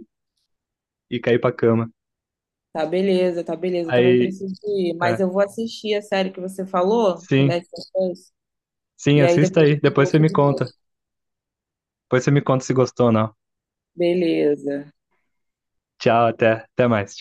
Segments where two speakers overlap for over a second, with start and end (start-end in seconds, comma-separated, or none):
9.1-10.7